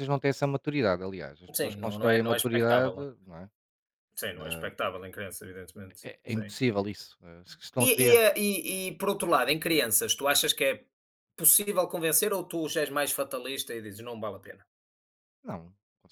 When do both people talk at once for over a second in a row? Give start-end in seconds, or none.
1.6-3.2